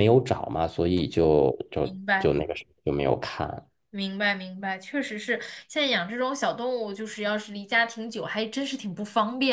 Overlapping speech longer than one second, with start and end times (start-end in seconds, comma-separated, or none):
none